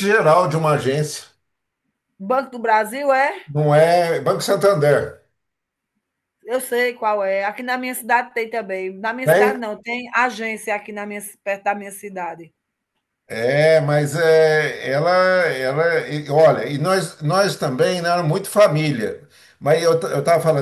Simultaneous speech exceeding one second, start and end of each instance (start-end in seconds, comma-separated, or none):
none